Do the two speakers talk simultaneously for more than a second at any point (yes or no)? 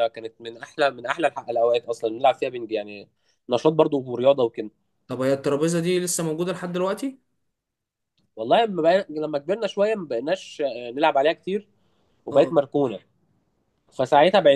no